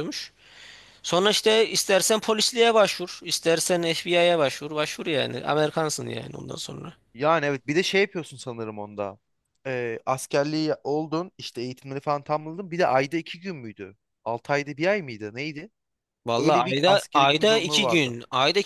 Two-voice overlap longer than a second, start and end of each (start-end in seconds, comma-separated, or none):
16.4-18.1